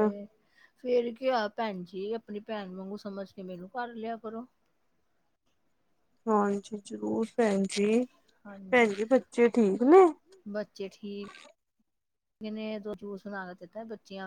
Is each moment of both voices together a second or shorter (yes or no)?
yes